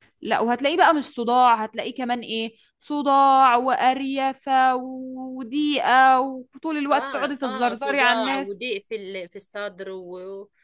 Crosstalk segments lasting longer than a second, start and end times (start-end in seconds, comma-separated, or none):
6.9-8.6